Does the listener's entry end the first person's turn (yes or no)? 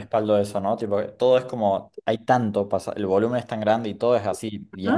yes